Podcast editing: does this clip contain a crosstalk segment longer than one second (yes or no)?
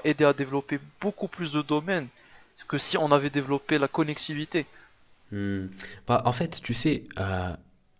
no